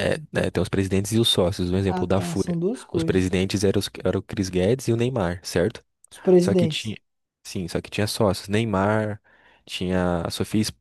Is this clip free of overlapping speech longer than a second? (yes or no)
no